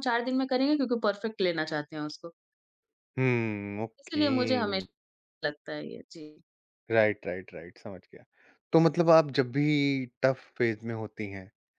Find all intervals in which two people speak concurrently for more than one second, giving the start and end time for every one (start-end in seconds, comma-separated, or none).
none